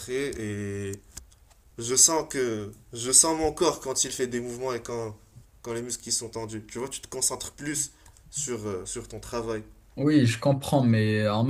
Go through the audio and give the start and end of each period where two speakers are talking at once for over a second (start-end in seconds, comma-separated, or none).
none